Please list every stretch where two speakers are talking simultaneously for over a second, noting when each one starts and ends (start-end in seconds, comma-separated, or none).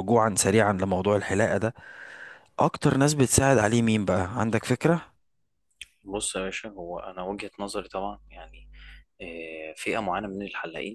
none